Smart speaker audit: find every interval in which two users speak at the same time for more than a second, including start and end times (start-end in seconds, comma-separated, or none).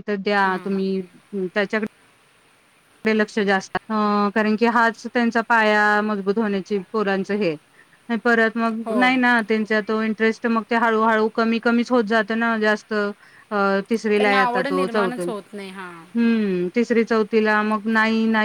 14.2-16.0